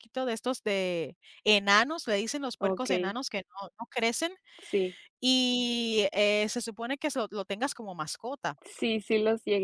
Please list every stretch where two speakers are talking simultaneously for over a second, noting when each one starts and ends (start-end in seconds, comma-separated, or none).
none